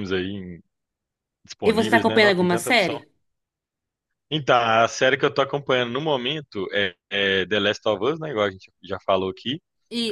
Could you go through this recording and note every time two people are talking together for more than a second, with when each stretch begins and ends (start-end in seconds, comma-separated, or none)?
1.6-3.0